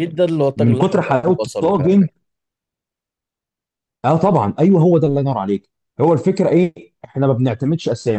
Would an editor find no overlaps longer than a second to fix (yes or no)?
no